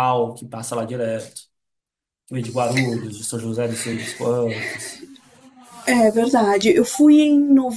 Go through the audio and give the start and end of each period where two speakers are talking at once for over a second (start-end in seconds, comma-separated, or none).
none